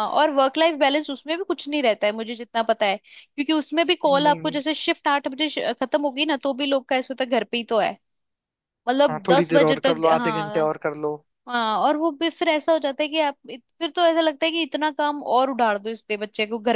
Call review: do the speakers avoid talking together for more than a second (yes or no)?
no